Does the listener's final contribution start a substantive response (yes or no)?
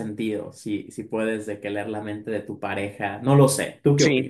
yes